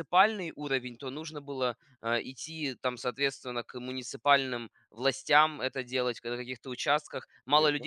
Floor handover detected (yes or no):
no